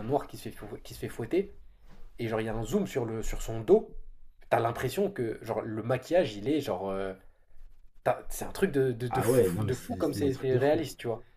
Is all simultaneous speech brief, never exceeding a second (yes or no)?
no